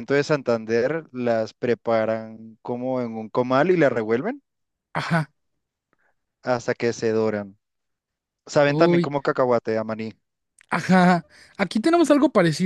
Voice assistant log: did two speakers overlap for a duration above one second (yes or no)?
no